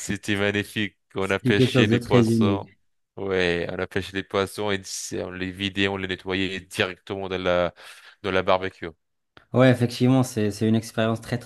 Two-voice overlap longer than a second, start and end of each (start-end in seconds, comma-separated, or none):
1.2-2.7